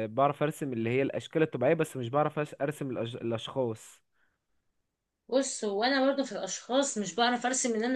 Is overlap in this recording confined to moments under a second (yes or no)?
yes